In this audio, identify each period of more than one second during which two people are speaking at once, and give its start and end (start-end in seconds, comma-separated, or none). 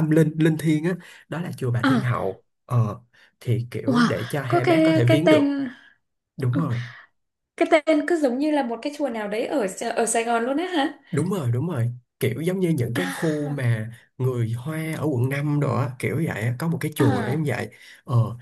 3.9-5.5